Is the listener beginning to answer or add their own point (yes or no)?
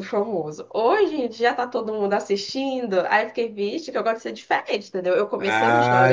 yes